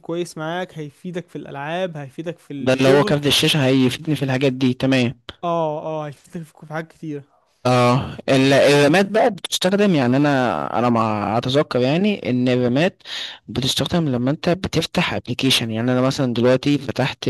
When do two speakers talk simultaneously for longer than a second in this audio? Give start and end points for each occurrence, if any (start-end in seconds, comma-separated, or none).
none